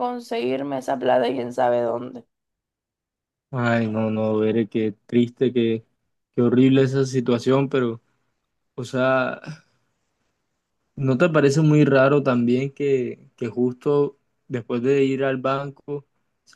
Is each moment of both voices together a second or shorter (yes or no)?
yes